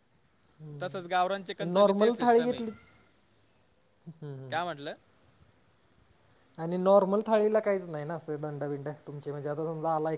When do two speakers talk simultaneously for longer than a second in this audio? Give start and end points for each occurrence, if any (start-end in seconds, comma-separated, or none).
0.8-2.6